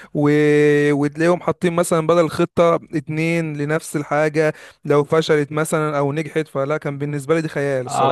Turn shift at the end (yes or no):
yes